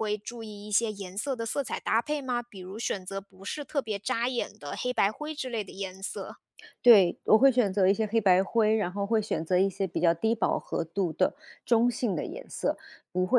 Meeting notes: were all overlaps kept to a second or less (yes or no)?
yes